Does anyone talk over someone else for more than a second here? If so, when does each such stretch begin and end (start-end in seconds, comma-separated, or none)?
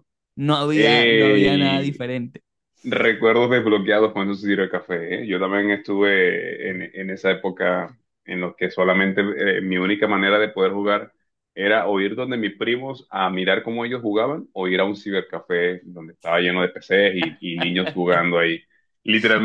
0.7-2.0